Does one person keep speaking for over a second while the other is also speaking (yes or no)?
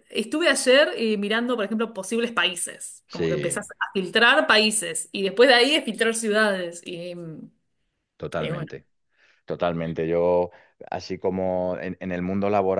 no